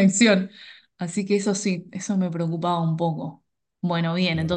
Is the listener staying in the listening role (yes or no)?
yes